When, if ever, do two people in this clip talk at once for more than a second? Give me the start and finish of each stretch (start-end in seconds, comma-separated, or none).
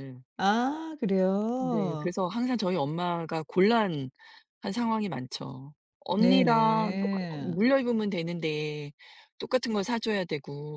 6.2-7.6